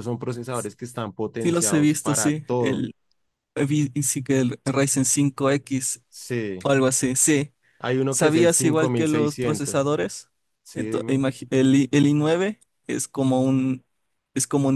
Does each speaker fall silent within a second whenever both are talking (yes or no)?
no